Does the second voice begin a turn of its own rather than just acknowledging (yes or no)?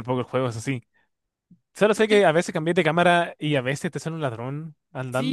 yes